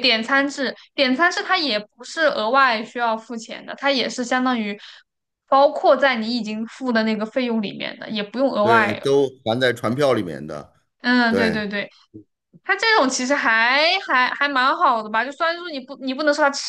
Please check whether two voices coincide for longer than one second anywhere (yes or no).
no